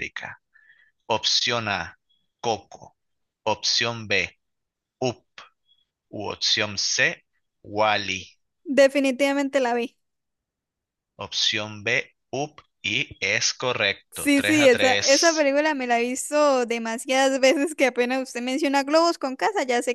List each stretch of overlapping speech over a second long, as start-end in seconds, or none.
14.1-15.5